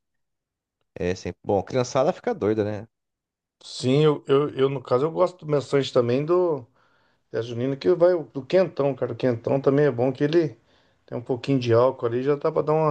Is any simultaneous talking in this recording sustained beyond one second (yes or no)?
no